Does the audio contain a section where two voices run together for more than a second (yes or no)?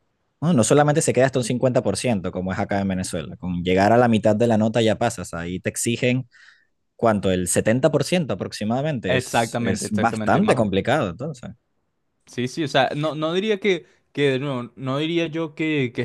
yes